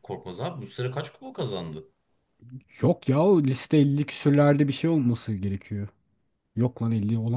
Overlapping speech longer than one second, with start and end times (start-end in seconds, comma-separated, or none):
none